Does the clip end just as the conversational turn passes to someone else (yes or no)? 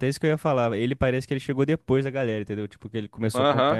yes